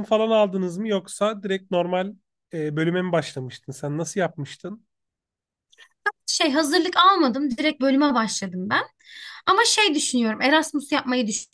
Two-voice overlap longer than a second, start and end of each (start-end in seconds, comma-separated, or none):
none